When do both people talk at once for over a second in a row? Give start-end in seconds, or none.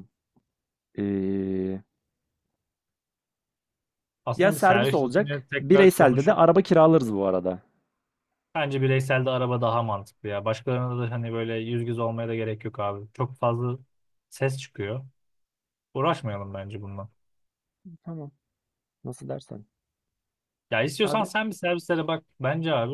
4.3-6.4